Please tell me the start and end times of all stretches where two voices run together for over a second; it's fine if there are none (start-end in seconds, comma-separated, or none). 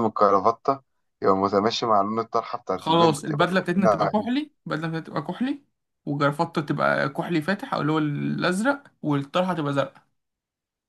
2.8-4.3